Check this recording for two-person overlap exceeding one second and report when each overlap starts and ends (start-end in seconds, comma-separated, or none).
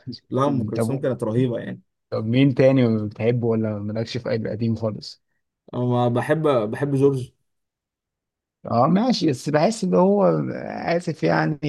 none